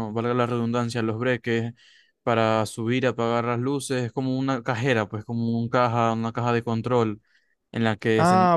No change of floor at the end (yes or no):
no